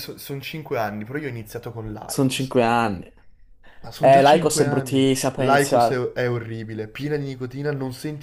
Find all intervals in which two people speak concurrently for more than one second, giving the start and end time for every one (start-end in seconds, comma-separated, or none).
4.0-6.1